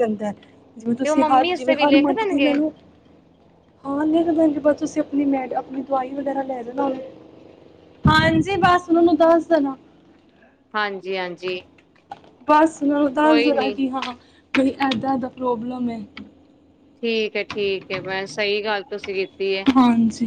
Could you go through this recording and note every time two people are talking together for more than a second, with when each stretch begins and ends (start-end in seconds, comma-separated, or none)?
1.0-2.5